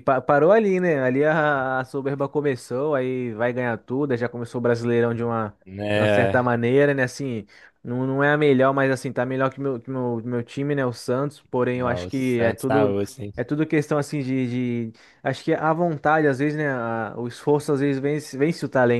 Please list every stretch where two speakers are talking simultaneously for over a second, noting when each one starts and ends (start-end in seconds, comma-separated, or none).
11.7-12.9